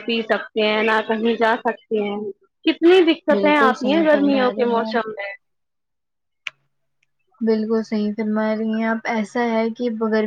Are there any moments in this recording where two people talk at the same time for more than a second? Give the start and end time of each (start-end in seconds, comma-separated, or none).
3.3-5.1